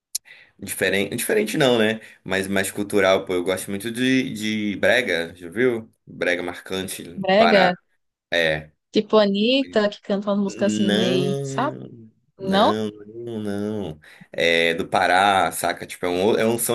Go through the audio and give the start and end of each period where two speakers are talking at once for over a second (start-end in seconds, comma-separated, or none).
10.5-11.8